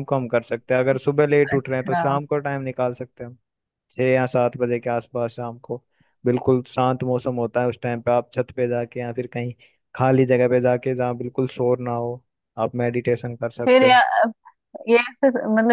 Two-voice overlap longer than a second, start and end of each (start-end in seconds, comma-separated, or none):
none